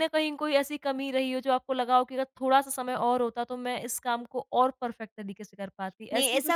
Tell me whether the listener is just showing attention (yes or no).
no